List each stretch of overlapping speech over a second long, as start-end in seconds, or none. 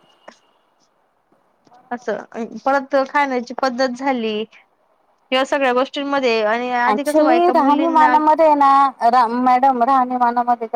6.9-8.1